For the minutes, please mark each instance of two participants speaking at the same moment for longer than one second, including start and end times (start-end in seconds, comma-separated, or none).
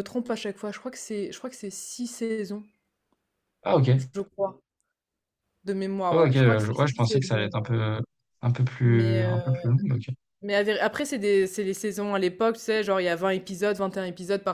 6.1-7.8